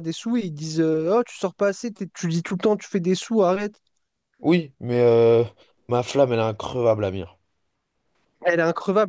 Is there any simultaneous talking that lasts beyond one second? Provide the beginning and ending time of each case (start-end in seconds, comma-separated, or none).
none